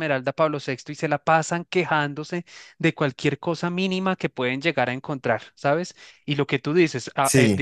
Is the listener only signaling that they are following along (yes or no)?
yes